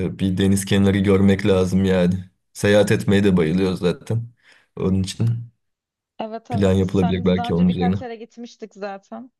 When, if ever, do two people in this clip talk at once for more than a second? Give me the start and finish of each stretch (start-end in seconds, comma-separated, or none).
6.5-8.0